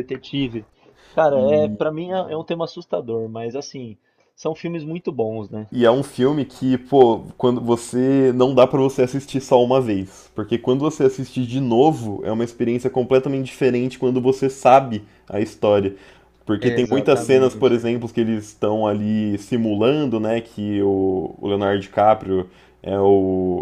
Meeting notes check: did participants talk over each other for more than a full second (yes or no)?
yes